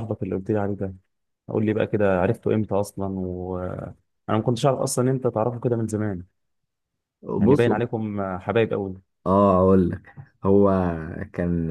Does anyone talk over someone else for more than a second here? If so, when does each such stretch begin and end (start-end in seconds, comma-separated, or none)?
none